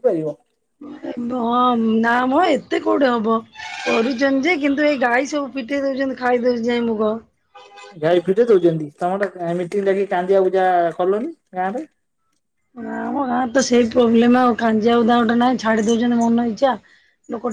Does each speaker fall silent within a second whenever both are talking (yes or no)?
yes